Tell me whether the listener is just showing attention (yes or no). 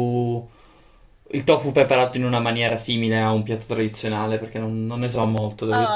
no